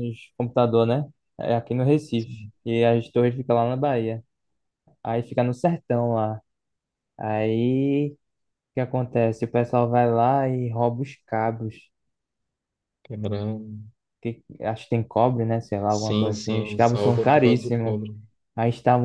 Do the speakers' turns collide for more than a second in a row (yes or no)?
yes